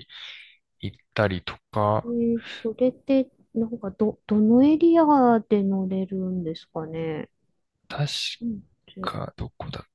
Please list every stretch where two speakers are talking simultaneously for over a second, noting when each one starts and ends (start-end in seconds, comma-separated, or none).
none